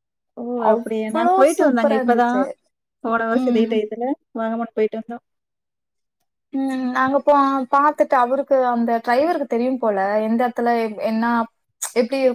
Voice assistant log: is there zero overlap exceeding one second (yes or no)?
no